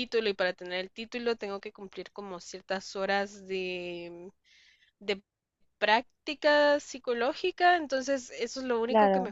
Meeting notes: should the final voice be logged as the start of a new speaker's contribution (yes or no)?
no